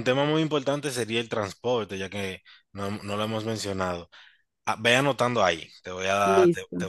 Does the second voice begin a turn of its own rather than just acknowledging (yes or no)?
no